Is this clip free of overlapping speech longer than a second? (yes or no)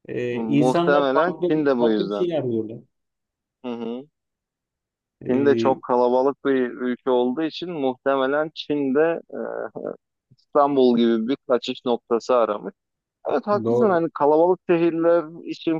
no